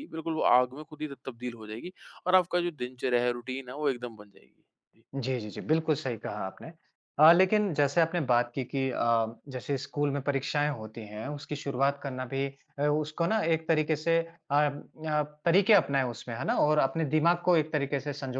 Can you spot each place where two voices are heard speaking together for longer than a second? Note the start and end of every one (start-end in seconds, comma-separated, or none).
none